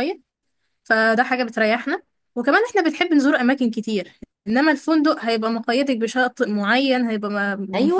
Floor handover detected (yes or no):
yes